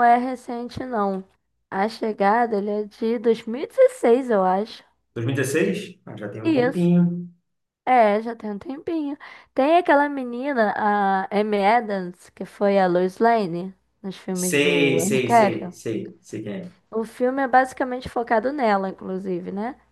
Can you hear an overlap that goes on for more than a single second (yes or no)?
yes